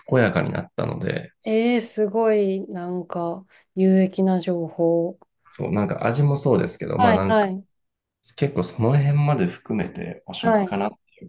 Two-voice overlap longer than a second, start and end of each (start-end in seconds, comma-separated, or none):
none